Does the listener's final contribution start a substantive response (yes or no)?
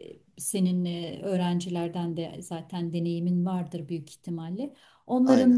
no